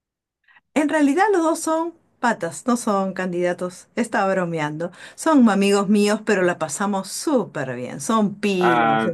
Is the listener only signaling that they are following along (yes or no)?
yes